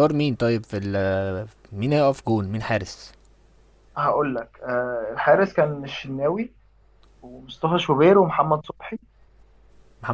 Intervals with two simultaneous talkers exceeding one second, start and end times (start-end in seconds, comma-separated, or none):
none